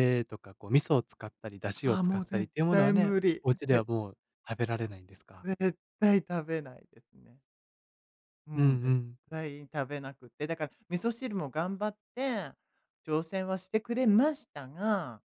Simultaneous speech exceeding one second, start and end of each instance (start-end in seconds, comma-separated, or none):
1.8-3.5